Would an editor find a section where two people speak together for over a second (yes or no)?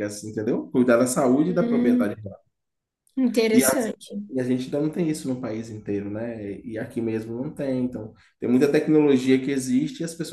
no